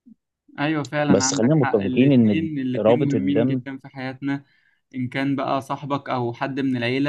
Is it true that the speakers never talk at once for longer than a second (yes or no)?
no